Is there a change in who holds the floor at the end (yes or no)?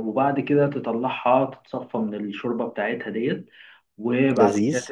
no